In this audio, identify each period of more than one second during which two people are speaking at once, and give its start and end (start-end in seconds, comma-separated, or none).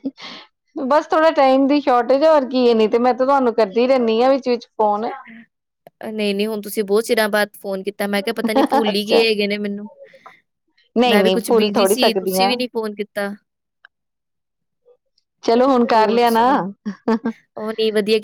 11.1-12.5